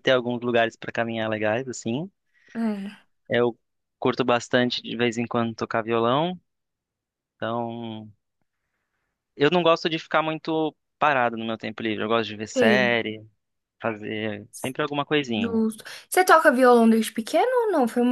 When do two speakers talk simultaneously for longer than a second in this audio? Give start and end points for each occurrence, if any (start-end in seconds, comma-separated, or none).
none